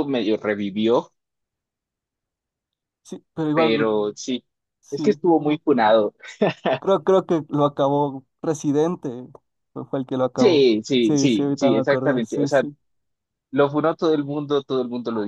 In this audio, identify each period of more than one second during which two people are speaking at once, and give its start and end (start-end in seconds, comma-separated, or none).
10.4-12.6